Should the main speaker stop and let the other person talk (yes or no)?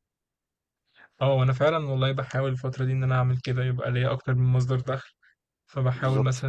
no